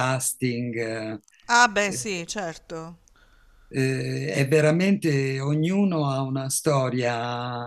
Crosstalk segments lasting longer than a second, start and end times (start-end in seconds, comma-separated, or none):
none